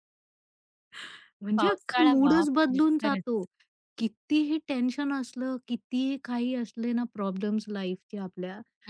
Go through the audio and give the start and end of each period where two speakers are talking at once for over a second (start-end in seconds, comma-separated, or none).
1.6-3.4